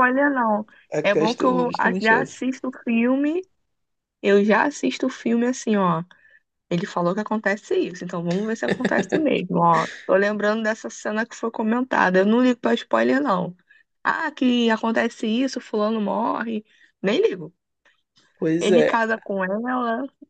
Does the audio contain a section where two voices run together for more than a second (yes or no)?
yes